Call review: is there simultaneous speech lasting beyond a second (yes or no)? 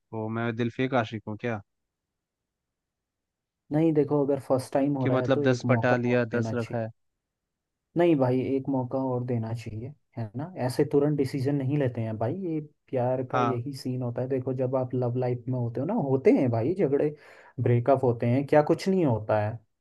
yes